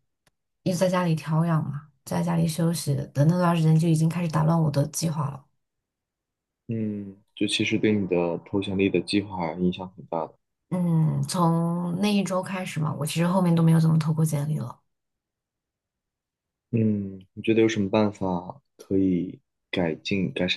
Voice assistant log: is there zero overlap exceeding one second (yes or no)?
yes